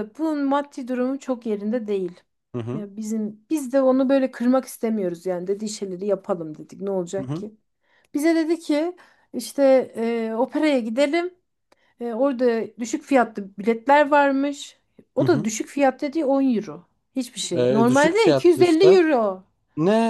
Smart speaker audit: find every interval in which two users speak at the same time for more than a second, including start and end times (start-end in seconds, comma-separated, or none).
17.6-19.0